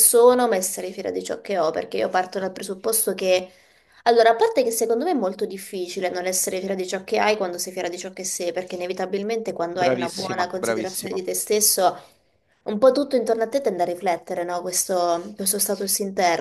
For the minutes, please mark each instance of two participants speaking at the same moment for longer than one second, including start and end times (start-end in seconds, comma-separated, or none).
9.7-11.2